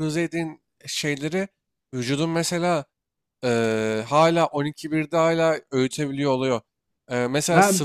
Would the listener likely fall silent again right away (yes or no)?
yes